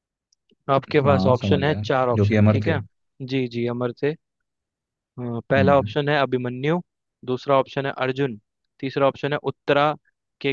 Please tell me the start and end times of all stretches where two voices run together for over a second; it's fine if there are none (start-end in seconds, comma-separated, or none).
1.0-2.8